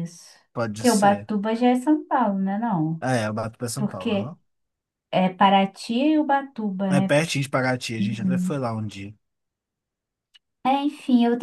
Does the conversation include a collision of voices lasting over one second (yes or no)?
no